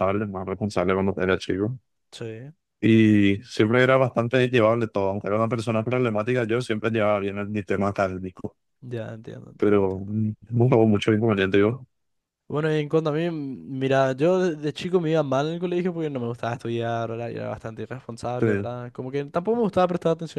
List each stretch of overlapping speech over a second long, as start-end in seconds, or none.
none